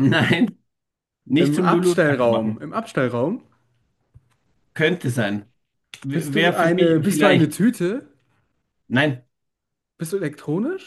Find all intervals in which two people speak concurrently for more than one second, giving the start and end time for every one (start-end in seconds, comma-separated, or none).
1.4-2.6, 6.1-7.5